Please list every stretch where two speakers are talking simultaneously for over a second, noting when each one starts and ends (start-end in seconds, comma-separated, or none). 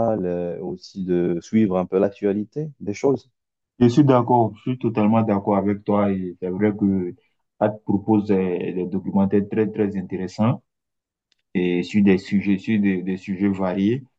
none